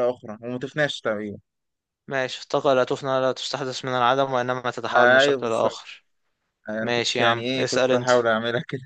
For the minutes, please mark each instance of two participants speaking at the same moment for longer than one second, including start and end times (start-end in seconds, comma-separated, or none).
6.8-8.1